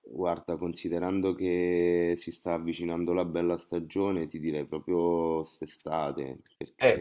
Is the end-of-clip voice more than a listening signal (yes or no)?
yes